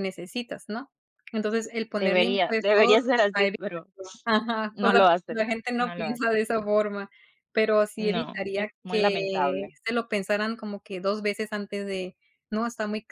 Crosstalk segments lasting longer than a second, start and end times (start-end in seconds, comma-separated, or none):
2.0-3.8, 4.7-6.3, 8.0-9.8